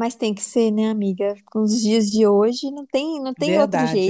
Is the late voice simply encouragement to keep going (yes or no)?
no